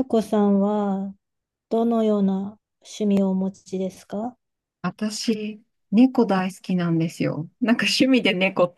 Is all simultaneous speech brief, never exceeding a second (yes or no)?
yes